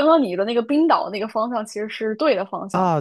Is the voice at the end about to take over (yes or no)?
yes